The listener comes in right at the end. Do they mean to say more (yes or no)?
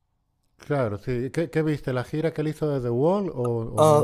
yes